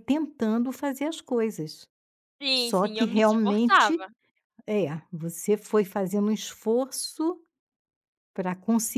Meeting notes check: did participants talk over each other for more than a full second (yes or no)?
yes